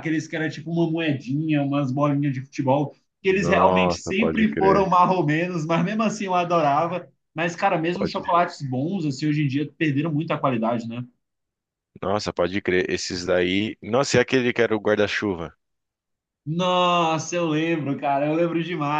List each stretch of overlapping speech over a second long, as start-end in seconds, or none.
3.3-4.9